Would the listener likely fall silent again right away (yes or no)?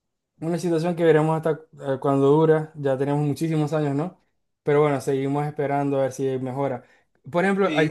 yes